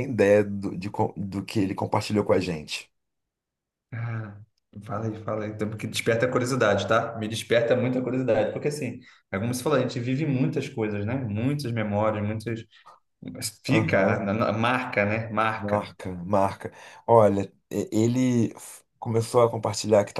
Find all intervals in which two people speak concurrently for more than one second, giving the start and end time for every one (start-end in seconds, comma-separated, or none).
none